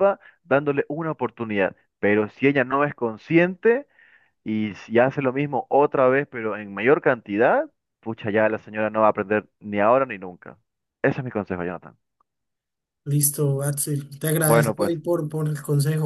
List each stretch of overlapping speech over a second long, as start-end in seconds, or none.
none